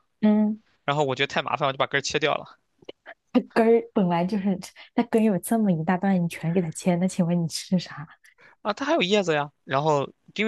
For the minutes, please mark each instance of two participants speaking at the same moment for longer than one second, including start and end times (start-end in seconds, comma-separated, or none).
none